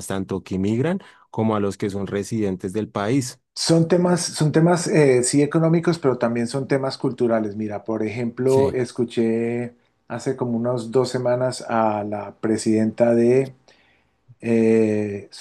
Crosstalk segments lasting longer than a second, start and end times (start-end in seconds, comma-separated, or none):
none